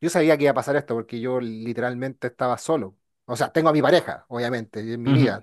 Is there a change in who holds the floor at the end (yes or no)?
no